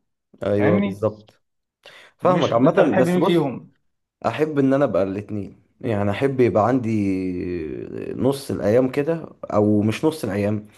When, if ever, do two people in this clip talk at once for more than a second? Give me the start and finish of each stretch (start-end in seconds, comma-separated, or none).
2.2-3.5